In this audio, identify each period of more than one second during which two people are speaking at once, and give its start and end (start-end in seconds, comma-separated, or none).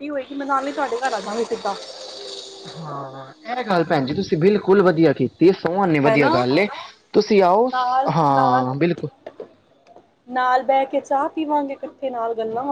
none